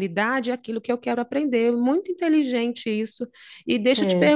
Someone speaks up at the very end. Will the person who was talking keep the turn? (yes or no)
yes